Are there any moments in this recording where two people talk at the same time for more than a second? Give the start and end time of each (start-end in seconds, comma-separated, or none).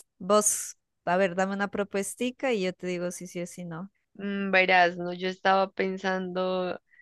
none